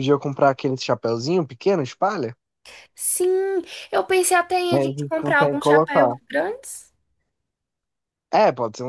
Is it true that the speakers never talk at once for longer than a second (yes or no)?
no